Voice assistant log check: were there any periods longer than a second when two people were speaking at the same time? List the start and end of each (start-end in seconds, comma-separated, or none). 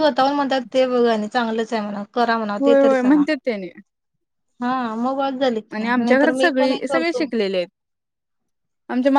5.7-7.3